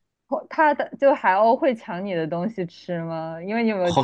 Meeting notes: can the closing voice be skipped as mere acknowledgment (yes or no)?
no